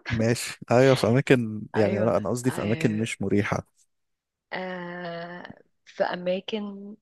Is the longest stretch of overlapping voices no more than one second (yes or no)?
no